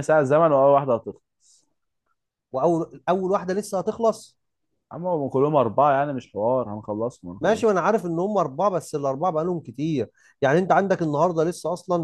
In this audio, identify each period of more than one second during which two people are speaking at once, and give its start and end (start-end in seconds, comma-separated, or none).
none